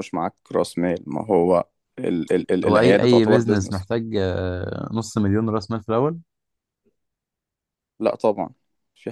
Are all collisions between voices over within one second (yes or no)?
no